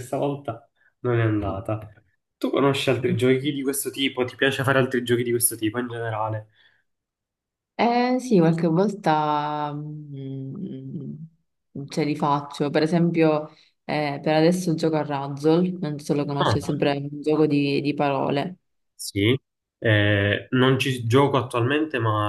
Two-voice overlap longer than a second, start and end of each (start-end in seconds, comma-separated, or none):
none